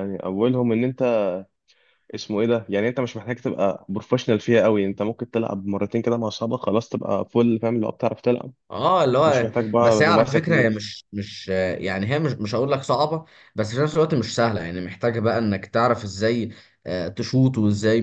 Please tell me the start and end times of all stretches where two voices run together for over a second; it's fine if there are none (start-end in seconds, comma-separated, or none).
9.2-10.9